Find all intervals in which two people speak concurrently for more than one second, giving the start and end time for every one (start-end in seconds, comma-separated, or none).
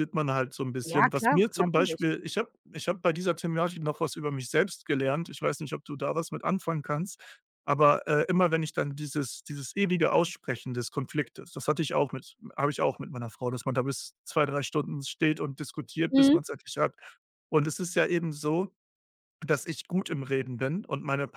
0.8-2.0